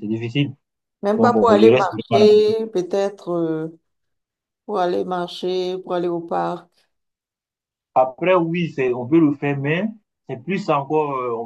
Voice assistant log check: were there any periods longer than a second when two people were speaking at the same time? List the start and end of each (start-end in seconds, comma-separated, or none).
1.1-2.5